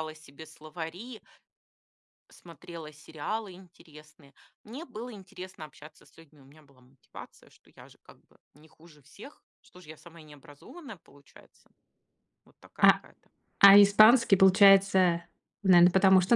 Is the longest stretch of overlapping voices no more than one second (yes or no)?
yes